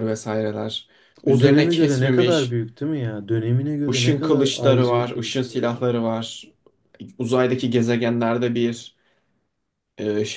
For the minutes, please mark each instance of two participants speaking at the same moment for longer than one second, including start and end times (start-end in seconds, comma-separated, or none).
1.2-2.6, 3.9-6.0